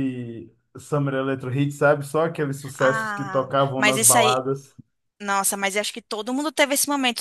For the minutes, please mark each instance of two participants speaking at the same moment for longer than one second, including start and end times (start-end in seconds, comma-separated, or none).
2.8-4.4